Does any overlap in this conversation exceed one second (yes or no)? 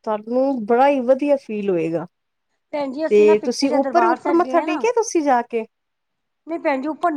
yes